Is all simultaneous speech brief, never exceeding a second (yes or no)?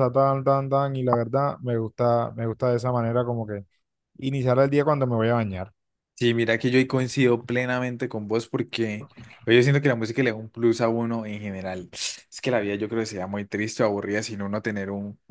yes